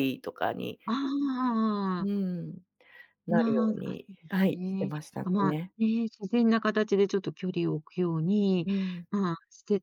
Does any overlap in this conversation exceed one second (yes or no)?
yes